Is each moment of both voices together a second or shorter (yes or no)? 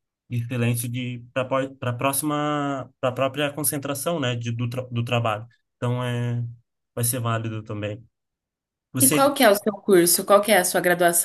yes